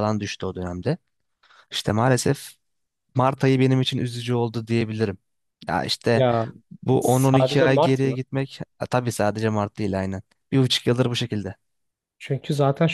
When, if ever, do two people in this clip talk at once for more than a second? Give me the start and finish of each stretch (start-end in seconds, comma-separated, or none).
7.0-8.2